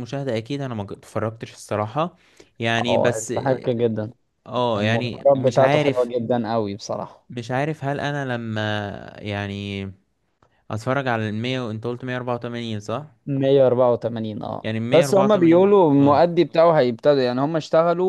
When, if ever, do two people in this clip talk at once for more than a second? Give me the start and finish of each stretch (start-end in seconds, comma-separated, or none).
4.8-6.1, 14.6-16.2